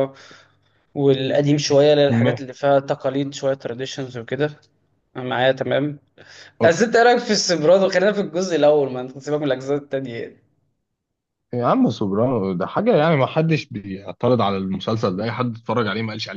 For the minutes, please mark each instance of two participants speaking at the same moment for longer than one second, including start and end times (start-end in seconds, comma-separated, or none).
none